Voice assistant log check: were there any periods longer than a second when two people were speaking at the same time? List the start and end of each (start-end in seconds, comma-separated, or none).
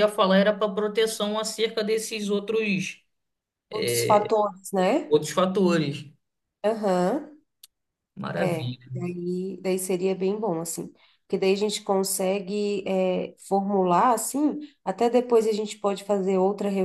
none